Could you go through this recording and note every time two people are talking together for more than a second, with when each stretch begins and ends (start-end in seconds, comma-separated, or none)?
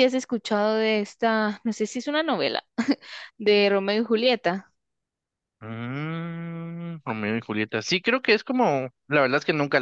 none